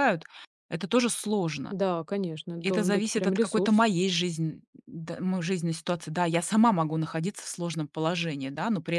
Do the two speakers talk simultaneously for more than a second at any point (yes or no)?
yes